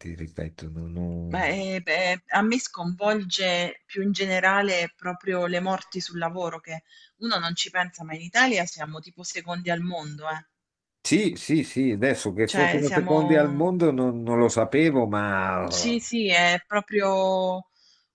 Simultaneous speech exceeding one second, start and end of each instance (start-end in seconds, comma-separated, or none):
12.4-13.7